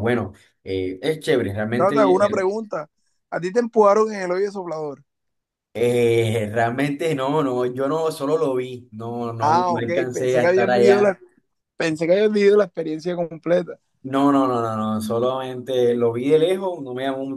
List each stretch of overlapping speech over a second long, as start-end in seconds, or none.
9.4-11.1